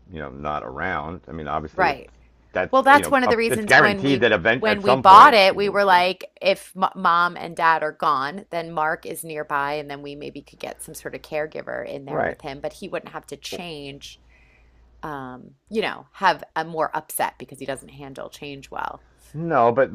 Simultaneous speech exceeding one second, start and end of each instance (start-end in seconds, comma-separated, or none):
2.7-6.0